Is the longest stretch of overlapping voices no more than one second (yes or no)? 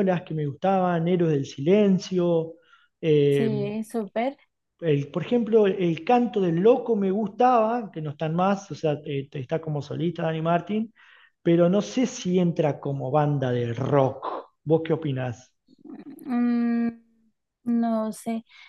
yes